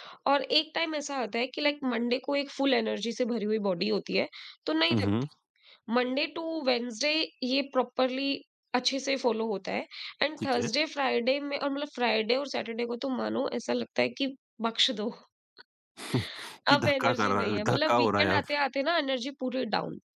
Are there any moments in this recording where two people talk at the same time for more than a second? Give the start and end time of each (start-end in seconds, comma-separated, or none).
16.7-18.4